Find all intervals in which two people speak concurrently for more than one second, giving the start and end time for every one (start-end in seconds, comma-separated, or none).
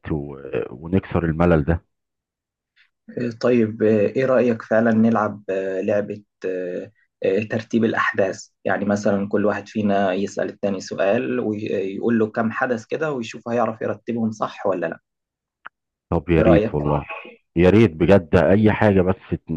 none